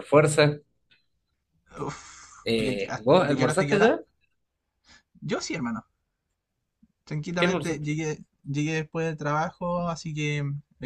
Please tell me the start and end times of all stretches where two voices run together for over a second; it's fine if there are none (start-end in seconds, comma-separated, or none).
2.4-4.0